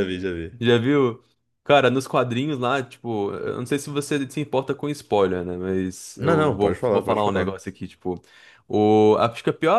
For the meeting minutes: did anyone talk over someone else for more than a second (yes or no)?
yes